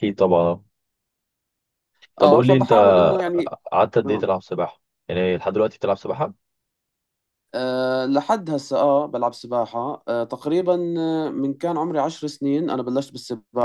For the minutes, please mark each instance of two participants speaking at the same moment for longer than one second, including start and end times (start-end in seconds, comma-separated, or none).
none